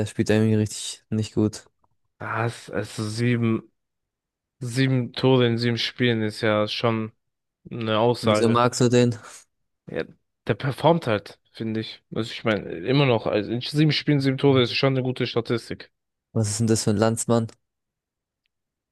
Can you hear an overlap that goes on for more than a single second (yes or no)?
no